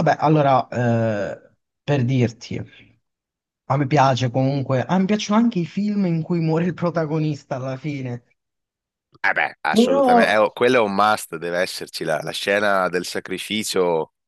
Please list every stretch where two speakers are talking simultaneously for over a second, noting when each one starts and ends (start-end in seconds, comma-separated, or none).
none